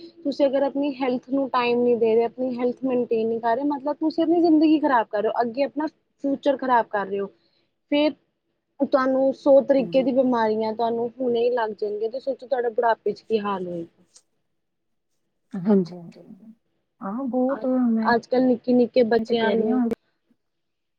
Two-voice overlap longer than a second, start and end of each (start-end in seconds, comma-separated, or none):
none